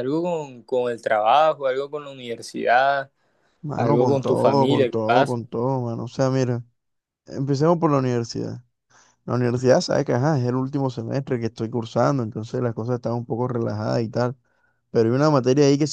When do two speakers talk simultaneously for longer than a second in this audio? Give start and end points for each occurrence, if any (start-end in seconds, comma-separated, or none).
3.8-5.4